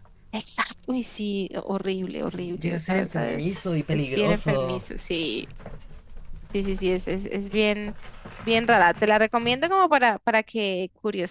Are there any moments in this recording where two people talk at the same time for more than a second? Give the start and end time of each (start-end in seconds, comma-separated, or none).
2.3-4.8